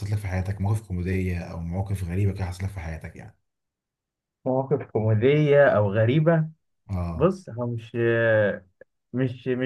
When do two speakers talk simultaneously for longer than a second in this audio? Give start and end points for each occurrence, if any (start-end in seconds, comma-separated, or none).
none